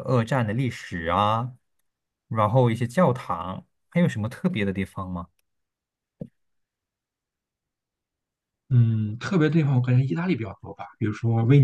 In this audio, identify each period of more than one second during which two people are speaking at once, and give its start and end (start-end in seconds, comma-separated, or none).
none